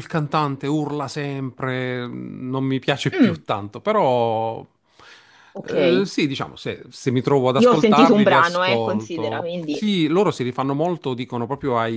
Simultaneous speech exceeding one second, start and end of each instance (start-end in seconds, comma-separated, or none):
7.6-9.8